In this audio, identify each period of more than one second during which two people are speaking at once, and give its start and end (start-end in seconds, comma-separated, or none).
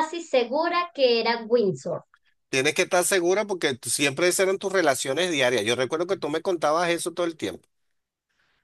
none